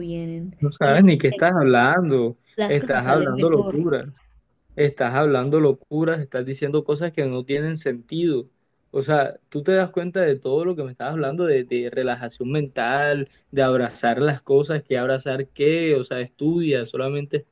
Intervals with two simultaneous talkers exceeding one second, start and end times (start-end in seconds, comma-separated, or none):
2.6-3.8